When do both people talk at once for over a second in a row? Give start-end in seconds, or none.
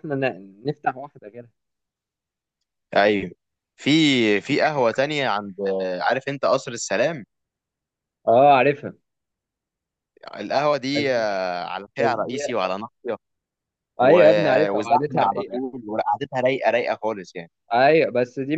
14.0-15.6